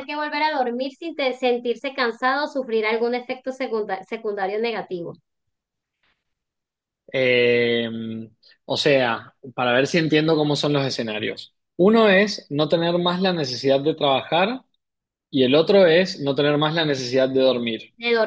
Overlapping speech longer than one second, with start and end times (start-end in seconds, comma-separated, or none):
none